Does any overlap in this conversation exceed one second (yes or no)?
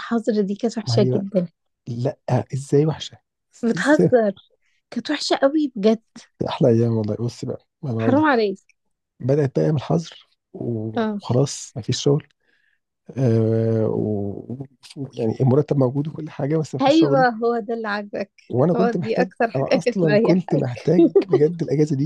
yes